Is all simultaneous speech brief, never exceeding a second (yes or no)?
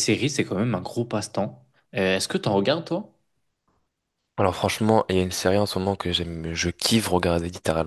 yes